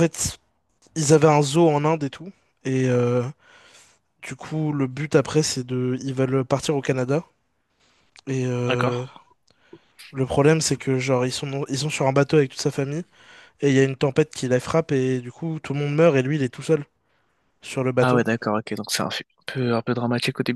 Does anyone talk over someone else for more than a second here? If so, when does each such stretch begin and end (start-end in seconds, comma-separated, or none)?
none